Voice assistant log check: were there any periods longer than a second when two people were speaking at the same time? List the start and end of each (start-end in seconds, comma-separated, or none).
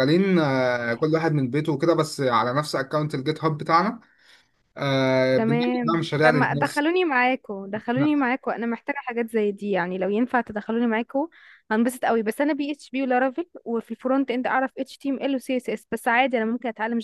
5.3-6.8